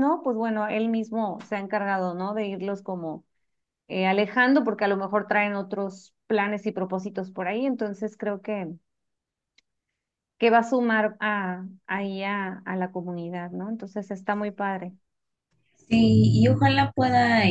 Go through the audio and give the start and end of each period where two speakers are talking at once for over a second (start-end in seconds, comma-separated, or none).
none